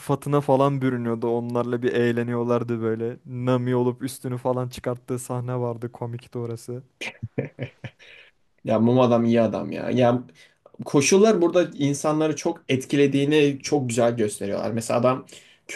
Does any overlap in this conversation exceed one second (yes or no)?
no